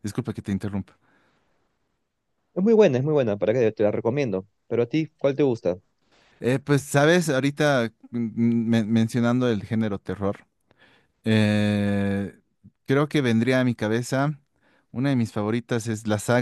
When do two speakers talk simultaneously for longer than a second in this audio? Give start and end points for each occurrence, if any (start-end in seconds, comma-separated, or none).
none